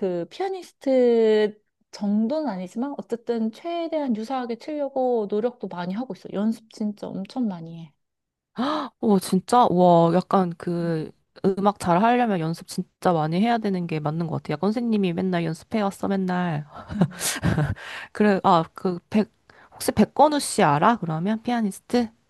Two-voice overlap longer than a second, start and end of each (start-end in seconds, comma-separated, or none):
none